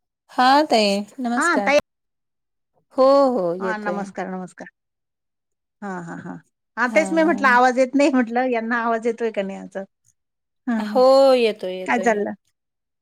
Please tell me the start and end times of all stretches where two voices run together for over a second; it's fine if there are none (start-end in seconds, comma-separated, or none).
none